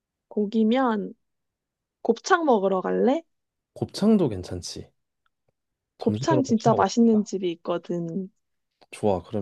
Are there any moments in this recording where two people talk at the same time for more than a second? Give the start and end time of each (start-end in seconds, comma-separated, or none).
6.0-7.3